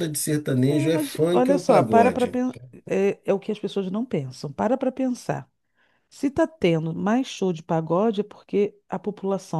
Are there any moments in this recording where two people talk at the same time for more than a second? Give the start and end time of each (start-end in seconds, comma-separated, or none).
0.7-2.4